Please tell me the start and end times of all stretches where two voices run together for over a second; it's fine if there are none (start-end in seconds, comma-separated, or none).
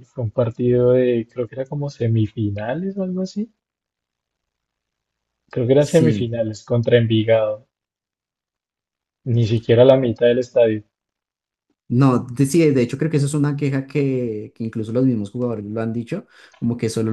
none